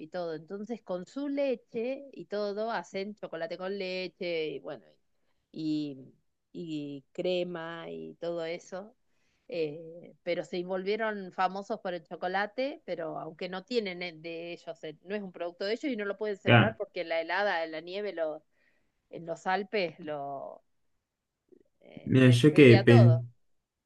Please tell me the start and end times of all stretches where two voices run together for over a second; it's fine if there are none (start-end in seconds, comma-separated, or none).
22.0-23.2